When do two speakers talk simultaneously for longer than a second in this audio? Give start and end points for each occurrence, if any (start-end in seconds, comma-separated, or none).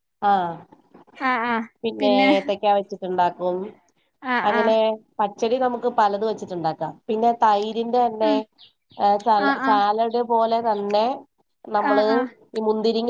none